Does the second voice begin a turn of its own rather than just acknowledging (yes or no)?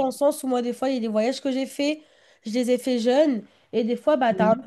no